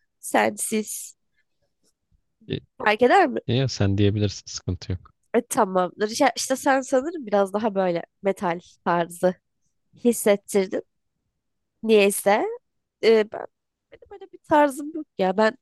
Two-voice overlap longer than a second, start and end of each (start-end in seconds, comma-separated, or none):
none